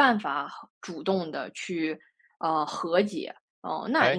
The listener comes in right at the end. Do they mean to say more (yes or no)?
yes